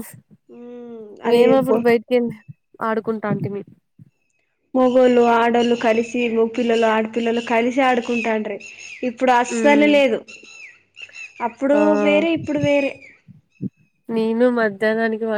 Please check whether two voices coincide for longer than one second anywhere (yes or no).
no